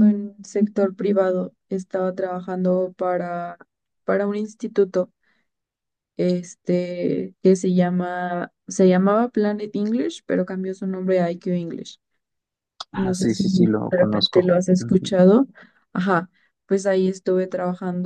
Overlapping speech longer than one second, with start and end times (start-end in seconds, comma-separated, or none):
12.9-14.5